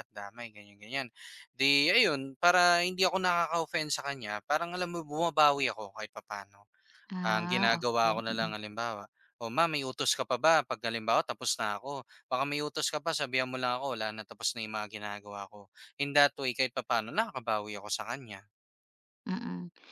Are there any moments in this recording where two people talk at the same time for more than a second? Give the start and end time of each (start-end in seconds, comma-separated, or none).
7.3-8.5